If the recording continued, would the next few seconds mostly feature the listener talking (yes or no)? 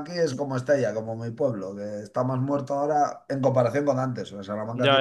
yes